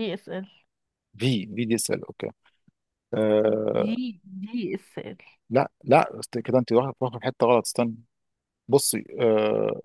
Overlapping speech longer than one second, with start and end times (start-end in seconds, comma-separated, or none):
none